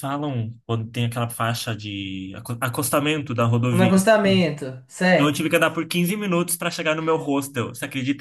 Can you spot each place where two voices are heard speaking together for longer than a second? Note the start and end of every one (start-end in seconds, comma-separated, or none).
none